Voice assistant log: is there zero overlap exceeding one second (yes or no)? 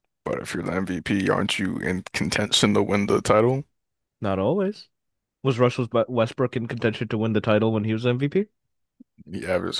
yes